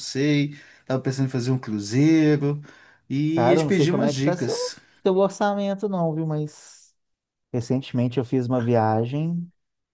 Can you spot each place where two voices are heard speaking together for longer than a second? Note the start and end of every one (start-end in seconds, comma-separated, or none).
3.3-4.6